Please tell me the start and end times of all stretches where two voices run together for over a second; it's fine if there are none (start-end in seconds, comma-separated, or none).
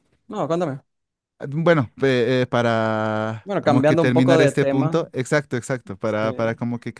3.4-5.0